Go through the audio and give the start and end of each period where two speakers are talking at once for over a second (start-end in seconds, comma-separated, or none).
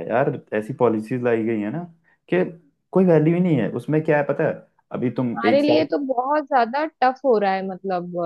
none